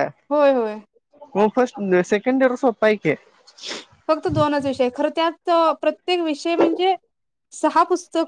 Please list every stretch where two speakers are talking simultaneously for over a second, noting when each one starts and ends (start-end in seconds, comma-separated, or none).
none